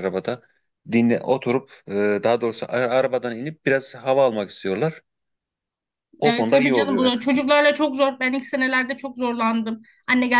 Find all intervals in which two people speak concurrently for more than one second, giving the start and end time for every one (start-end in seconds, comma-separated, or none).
6.2-7.4